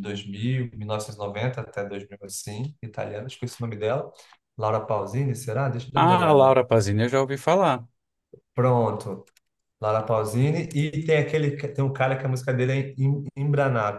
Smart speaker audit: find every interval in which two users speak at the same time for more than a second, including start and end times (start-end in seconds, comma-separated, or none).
none